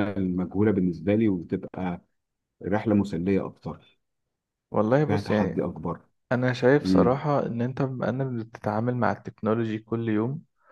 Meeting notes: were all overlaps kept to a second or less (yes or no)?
yes